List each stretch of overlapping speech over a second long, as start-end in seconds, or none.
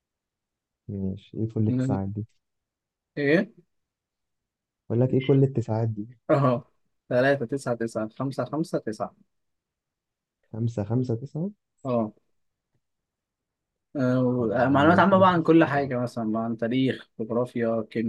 14.4-15.9